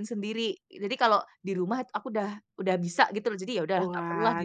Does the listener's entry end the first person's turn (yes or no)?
yes